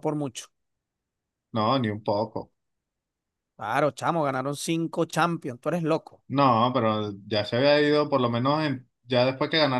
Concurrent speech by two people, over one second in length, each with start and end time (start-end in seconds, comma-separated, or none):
none